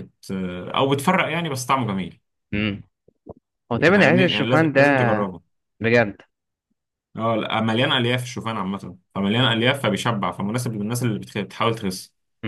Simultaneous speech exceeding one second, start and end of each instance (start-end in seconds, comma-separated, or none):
3.9-5.1